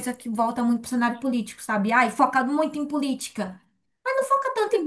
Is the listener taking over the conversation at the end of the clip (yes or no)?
no